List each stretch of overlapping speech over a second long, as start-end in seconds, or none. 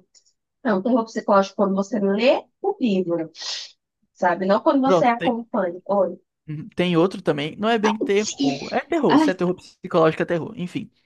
none